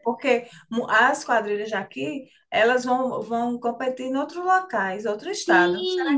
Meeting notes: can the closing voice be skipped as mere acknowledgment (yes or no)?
no